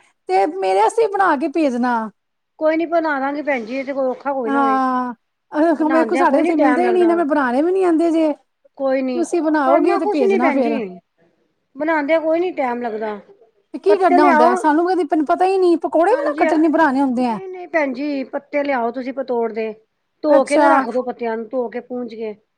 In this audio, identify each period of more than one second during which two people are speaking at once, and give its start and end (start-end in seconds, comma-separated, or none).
5.8-7.2, 9.0-10.8